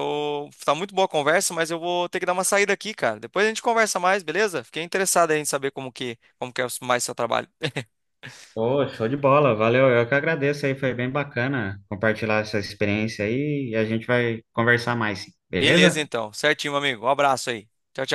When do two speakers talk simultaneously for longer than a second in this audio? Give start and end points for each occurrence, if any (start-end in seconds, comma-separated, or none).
none